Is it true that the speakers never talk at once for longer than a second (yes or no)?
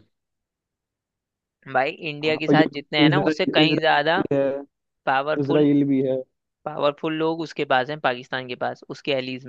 no